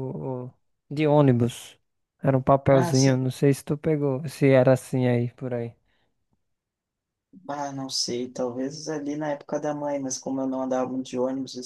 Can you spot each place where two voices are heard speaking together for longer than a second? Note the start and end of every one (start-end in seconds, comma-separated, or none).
none